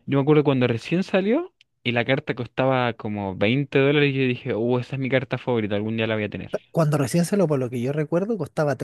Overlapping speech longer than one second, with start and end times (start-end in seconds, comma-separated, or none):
none